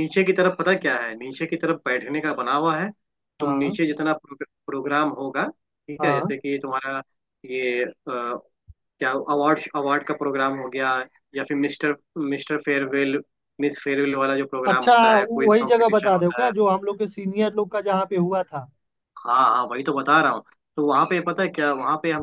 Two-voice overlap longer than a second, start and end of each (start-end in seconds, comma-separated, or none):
14.7-16.5